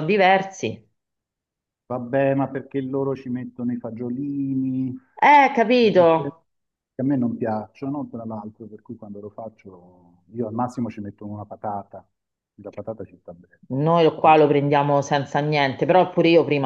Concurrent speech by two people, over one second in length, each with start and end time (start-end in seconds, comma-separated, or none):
none